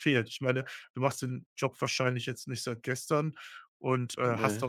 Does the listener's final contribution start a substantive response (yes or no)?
no